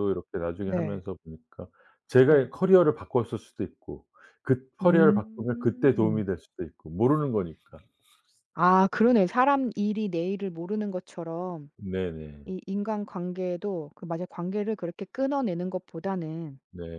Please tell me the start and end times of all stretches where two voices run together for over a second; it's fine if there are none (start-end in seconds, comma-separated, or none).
4.8-6.2